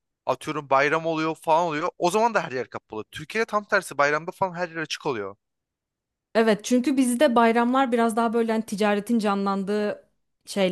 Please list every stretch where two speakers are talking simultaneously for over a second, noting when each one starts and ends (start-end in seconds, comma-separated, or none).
none